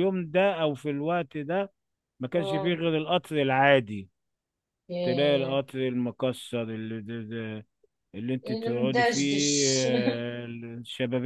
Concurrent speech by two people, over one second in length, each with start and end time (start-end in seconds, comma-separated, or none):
8.5-9.9